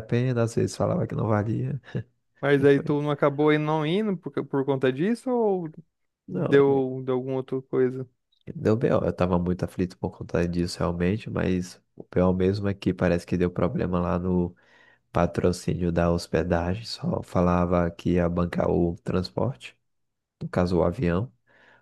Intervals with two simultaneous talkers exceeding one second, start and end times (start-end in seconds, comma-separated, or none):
none